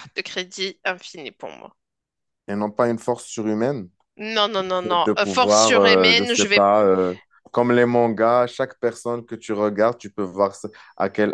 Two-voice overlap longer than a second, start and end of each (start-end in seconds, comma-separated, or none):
4.8-6.7